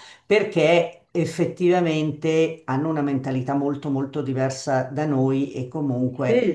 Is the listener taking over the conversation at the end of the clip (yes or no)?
no